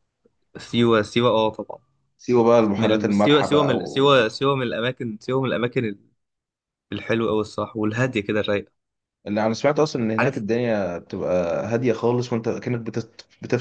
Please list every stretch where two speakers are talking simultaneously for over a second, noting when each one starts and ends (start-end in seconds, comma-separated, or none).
2.8-4.4